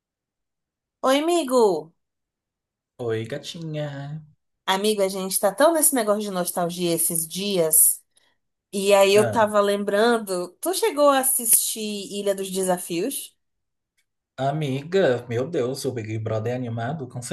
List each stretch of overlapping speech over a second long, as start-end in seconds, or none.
none